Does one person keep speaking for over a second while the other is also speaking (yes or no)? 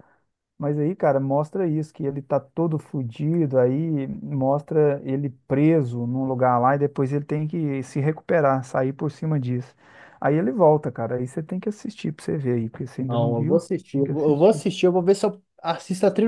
yes